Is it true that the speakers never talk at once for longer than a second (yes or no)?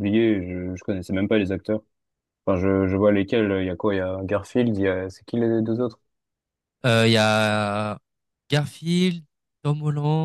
yes